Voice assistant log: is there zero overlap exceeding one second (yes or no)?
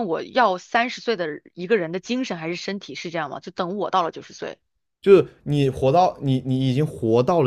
yes